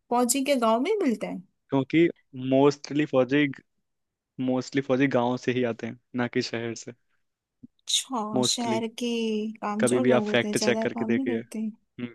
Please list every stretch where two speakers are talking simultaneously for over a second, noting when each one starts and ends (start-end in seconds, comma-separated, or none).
9.8-11.4